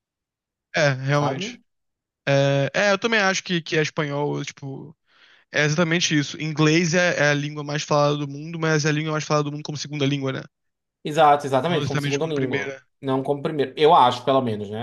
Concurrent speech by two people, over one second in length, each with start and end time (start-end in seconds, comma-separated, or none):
11.7-12.9